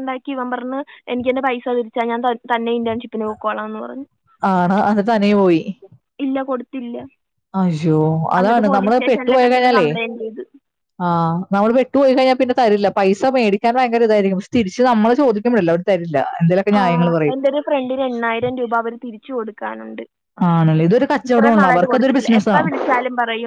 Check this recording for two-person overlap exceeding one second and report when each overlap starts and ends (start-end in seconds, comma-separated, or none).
8.4-9.9, 21.3-22.8